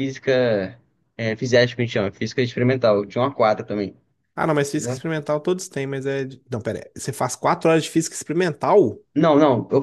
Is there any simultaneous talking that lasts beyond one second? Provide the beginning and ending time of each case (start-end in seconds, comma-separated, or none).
none